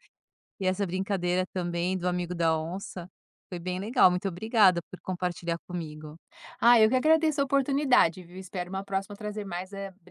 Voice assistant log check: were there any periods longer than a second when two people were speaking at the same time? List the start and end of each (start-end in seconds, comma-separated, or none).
none